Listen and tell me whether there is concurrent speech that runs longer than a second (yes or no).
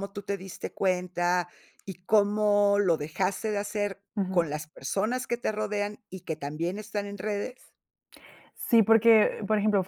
no